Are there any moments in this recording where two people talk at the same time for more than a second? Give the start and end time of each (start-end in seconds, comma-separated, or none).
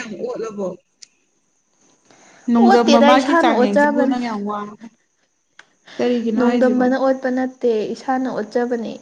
2.7-4.2